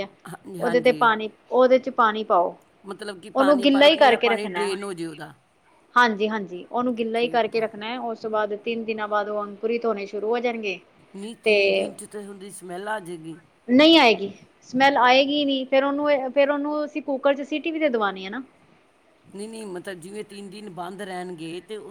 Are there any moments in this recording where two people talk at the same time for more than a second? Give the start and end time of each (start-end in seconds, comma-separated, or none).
3.3-4.7